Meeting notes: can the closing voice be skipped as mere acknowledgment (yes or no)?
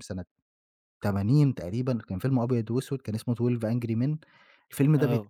yes